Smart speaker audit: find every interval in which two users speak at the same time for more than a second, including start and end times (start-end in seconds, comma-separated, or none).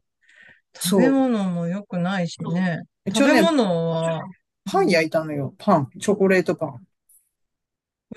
none